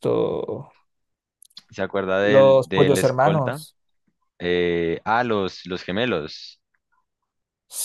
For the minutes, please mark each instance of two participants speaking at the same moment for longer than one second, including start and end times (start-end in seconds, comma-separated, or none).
2.2-3.6